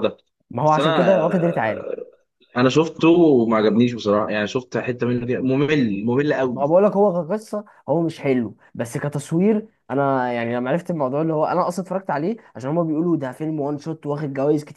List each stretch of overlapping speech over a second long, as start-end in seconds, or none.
0.7-1.9